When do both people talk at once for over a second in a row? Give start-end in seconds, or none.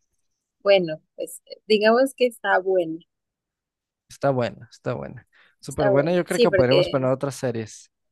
5.7-7.1